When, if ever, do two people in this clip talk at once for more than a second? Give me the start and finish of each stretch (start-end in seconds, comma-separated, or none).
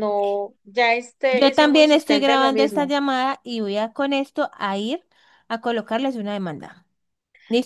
1.3-2.9